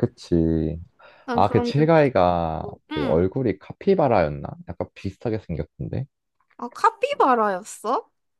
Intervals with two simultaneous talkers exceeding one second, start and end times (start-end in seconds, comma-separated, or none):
1.3-3.2